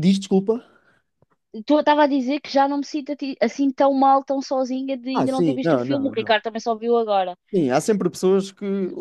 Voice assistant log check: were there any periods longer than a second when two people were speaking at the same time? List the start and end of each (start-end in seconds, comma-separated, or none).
5.1-6.3